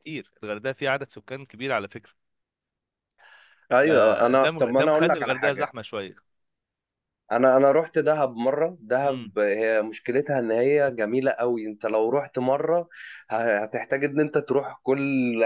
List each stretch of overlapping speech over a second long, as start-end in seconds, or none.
3.9-5.7